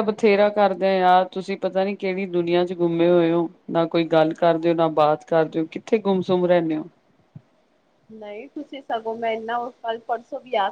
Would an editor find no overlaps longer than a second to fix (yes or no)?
yes